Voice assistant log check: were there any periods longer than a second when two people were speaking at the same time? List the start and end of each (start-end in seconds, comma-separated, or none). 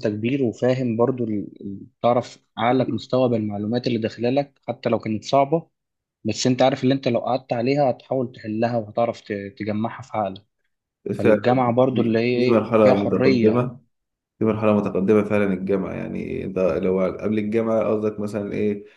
11.9-13.7